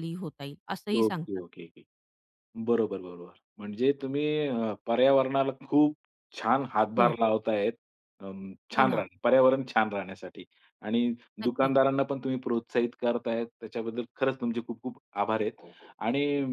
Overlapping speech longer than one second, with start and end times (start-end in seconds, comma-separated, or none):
none